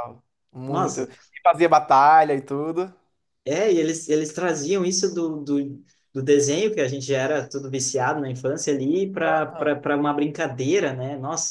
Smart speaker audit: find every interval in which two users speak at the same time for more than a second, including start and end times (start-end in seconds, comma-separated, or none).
none